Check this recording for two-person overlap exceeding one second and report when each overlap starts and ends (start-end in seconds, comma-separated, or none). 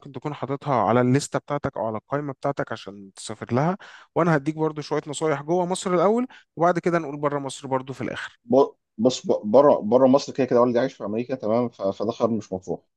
none